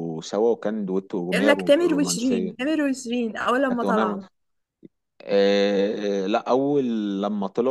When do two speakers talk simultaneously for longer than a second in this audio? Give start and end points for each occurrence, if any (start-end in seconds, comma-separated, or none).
1.3-2.5